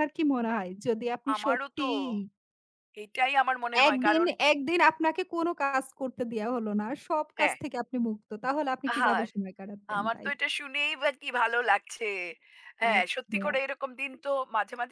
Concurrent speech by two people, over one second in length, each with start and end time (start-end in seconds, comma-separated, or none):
none